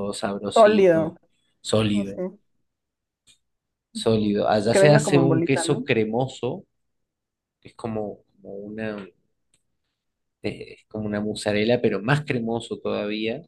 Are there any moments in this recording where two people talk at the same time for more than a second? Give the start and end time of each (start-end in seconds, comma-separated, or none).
3.9-5.9